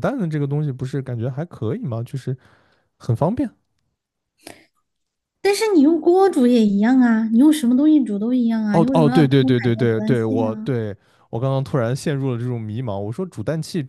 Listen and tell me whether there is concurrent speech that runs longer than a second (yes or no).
yes